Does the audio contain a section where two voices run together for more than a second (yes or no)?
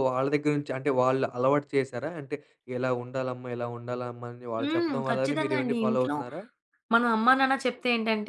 yes